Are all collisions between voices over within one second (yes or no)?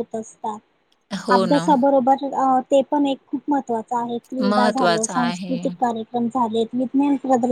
no